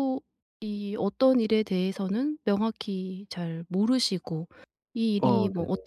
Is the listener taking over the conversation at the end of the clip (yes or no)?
no